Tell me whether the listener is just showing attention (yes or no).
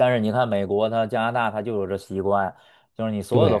yes